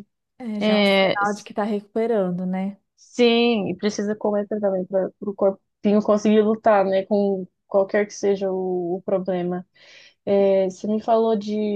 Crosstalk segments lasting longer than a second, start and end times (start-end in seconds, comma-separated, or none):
none